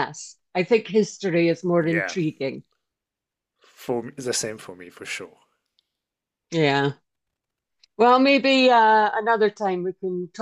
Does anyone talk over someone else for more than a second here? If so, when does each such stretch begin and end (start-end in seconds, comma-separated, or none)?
none